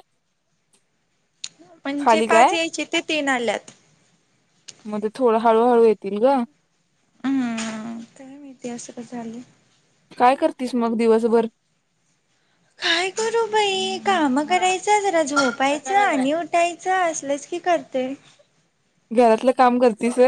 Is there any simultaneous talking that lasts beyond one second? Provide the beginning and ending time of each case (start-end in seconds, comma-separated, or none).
none